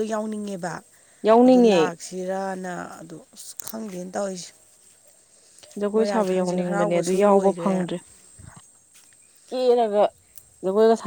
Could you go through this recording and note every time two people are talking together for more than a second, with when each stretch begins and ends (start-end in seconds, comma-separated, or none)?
6.0-7.8